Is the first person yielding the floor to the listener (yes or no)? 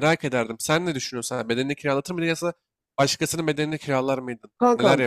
yes